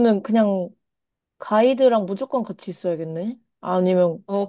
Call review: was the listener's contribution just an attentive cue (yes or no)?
no